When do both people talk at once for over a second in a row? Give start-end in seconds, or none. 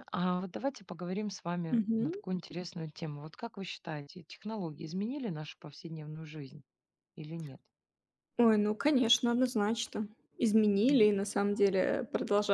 none